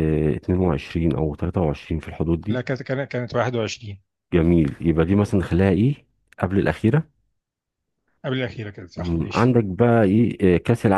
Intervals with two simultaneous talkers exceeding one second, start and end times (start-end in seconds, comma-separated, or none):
none